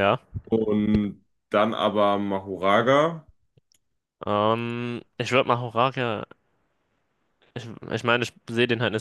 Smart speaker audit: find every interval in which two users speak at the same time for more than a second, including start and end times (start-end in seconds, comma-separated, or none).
none